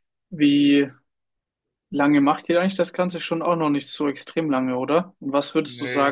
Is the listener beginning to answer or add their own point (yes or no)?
no